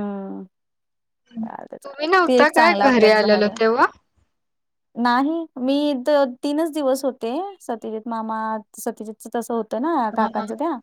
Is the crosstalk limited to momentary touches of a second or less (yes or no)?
no